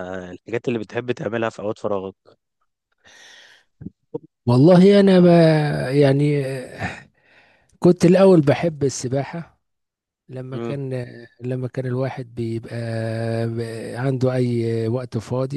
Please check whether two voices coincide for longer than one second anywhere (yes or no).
no